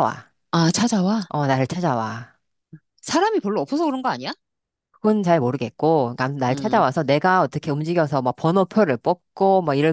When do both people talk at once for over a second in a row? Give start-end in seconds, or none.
none